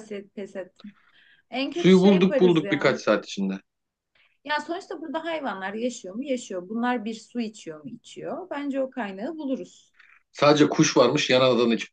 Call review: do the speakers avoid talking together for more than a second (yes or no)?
no